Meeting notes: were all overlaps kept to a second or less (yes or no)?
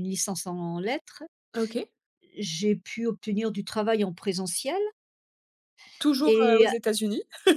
yes